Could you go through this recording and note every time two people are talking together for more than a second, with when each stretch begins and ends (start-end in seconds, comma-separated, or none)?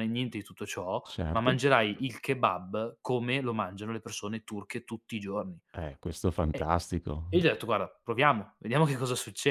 none